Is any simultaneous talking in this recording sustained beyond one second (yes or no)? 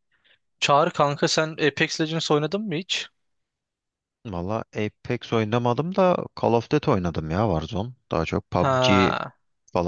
no